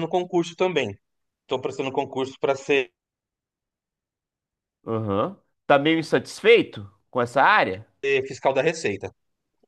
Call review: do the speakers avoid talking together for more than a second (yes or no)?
yes